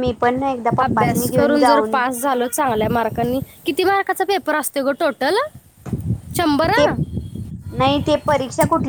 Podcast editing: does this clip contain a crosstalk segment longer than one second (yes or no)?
yes